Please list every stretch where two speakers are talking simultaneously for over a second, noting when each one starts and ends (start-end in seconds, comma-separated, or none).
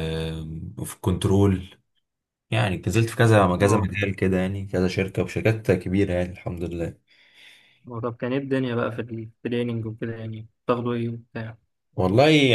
none